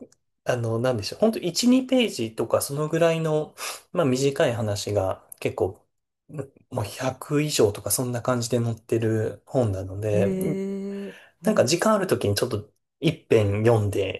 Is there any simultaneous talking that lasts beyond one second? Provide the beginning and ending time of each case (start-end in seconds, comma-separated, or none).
none